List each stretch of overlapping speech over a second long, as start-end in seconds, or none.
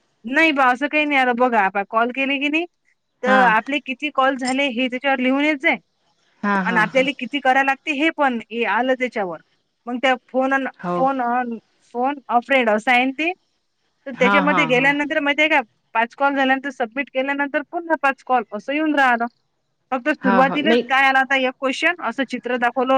none